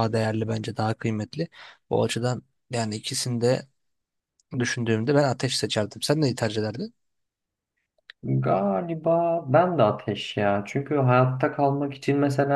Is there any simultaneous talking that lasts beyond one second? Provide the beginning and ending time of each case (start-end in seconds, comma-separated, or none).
none